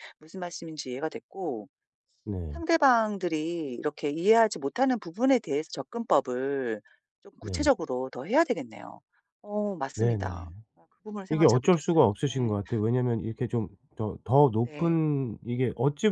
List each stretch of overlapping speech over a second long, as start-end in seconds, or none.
11.3-12.6